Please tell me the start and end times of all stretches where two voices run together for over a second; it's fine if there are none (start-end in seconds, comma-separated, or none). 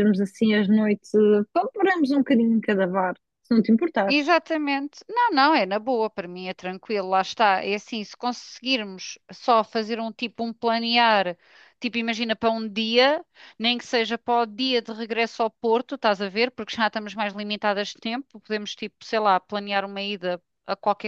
none